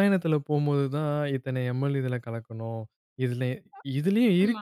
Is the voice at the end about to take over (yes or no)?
no